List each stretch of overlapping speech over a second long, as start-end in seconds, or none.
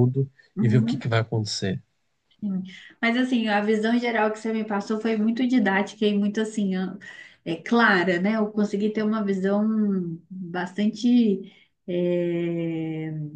none